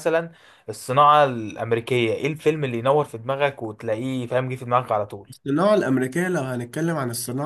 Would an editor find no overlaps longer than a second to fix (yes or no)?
yes